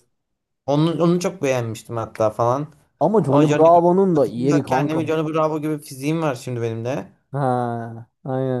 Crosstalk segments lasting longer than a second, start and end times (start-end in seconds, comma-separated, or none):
3.3-5.2